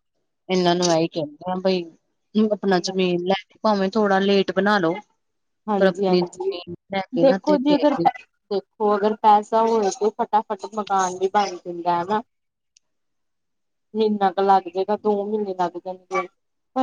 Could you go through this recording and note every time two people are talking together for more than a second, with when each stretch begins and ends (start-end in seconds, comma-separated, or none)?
none